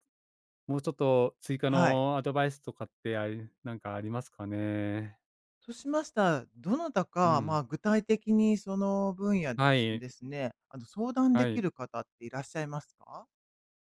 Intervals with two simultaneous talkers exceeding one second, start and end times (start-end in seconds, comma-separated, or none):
none